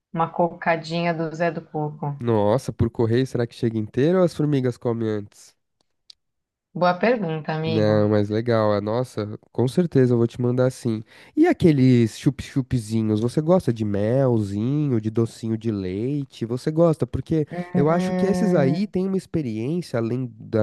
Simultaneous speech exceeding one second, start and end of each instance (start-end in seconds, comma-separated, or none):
17.5-18.9